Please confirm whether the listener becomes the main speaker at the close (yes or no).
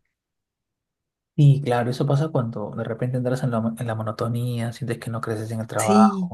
yes